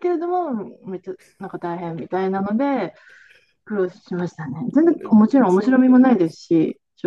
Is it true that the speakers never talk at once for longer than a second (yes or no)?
no